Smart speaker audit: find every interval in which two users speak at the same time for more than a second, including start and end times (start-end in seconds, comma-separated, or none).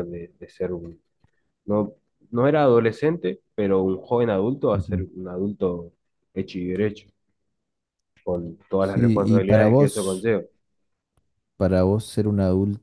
8.8-10.3